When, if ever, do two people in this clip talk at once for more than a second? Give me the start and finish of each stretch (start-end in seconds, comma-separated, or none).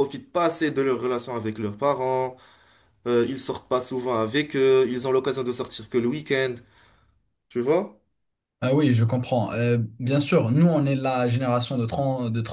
none